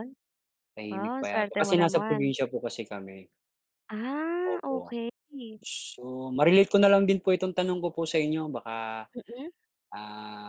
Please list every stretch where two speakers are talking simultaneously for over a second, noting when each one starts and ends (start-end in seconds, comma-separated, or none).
0.9-2.3